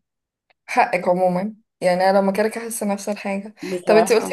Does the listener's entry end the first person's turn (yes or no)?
no